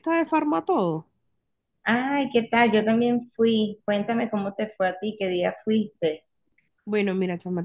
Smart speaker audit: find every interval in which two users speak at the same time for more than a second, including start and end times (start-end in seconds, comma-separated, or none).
none